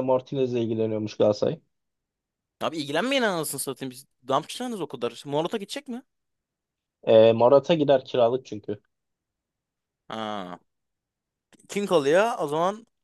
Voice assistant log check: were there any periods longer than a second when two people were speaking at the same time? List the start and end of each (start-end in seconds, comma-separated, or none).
none